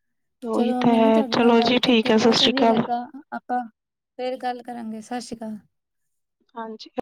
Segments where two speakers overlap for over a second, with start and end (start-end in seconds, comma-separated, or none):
0.5-2.8